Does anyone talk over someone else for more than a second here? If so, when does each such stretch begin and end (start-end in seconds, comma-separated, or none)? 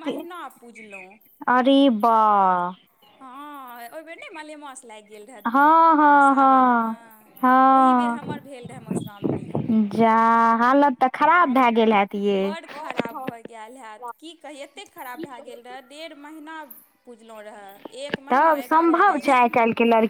5.5-6.9